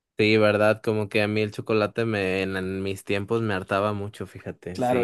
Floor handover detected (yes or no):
yes